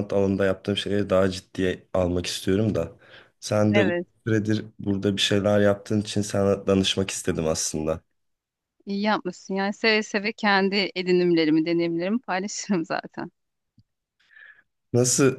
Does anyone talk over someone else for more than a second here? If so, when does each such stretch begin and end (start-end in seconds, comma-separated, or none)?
none